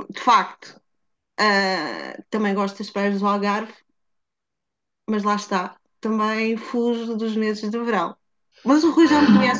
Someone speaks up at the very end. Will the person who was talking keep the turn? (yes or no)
no